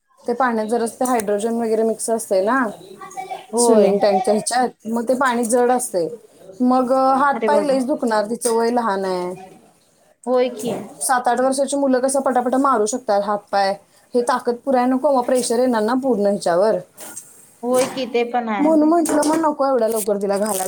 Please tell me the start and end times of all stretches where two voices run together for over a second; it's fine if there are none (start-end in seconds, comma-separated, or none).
none